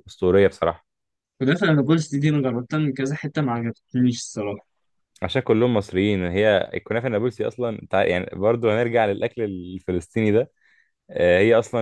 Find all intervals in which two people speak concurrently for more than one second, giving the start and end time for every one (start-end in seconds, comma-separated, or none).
none